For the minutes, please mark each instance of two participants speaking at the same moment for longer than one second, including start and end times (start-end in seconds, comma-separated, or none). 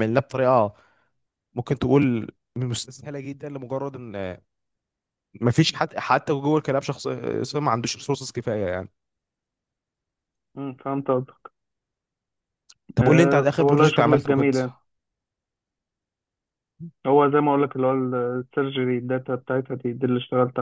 13.0-14.5